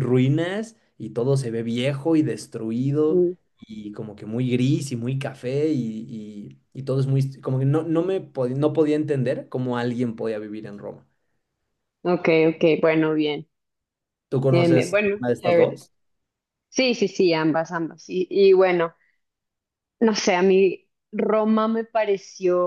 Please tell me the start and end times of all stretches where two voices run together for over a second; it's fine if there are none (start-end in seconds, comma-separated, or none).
14.5-15.8